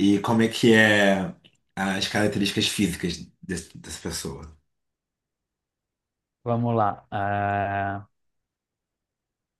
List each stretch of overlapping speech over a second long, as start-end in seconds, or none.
none